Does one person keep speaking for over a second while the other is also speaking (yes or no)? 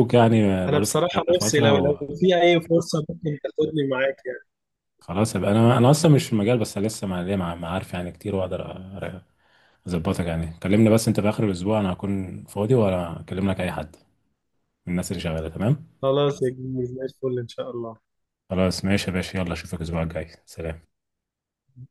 yes